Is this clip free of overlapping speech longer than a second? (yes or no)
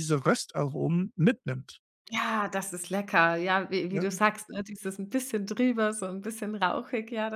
yes